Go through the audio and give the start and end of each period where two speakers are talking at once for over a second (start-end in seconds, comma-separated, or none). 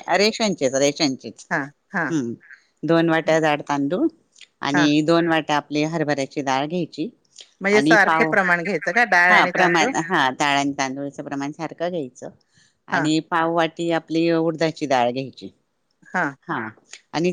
none